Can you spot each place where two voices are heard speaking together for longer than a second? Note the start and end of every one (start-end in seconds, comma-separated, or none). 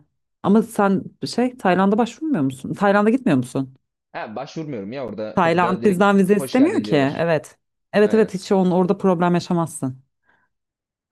5.3-7.2